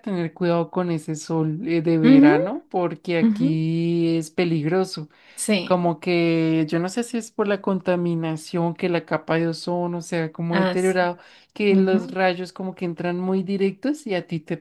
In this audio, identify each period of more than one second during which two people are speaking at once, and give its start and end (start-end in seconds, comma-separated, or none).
none